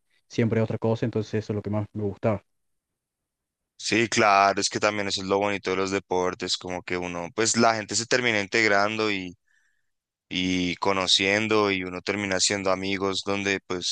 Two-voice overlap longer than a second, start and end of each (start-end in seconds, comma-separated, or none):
none